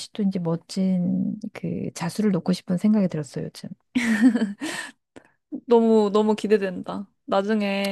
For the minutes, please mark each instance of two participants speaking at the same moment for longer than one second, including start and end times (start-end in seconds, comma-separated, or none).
none